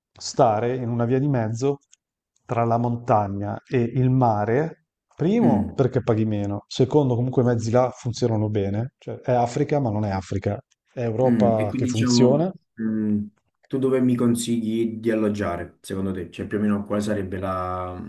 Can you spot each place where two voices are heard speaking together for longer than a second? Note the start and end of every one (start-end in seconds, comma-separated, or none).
11.3-12.5